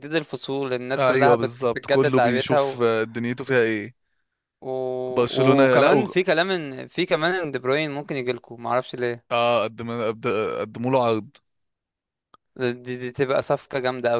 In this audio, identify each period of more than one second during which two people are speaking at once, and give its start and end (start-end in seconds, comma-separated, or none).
1.0-2.8